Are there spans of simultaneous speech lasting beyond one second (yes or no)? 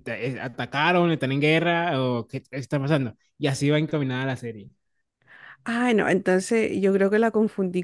no